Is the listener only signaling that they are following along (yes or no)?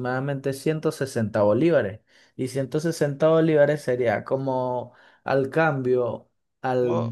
yes